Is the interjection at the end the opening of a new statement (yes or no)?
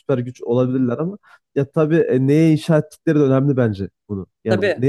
no